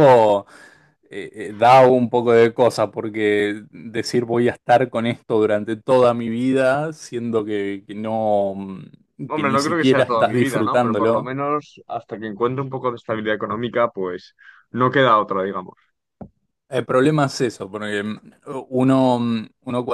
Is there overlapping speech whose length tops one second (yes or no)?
yes